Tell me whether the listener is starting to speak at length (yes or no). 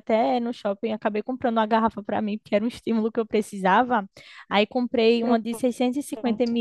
no